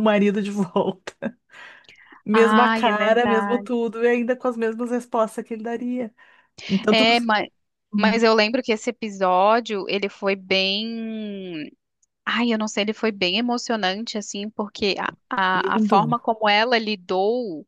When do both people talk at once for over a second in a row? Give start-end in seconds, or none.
2.3-3.7